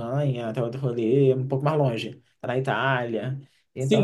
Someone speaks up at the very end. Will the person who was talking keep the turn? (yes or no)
no